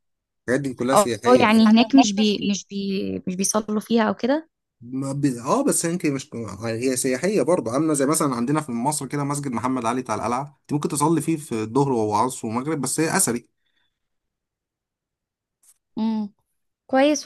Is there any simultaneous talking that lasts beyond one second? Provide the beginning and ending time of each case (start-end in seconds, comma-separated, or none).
0.9-2.6